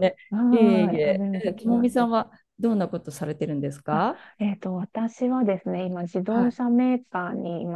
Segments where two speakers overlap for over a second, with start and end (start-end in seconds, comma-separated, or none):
0.5-2.1